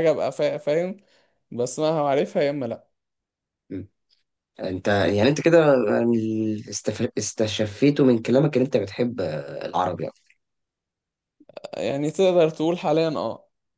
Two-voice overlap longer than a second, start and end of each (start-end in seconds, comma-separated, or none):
none